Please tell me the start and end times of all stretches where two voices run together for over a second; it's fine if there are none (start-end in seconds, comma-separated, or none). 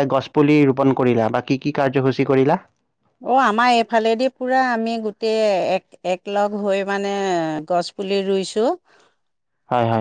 none